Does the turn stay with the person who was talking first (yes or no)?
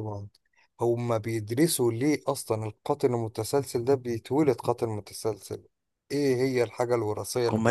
no